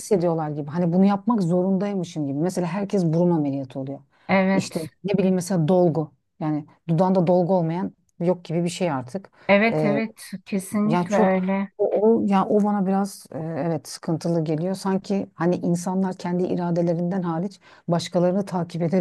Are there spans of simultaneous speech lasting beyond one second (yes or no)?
no